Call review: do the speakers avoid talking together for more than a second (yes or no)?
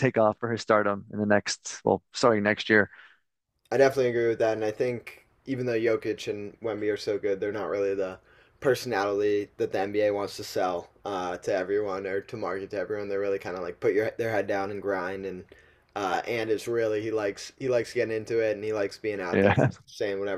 yes